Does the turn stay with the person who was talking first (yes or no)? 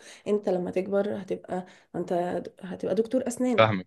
yes